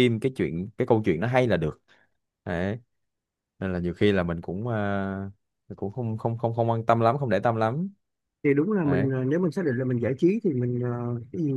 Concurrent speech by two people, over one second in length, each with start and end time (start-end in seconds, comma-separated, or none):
none